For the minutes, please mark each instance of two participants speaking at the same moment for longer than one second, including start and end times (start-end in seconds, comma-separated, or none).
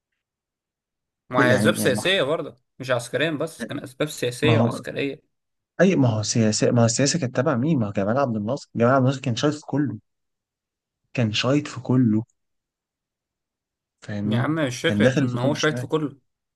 14.2-15.9